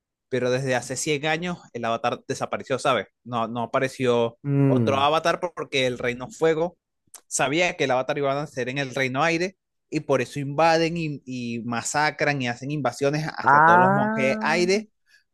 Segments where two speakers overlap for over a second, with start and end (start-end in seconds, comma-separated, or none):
13.4-14.6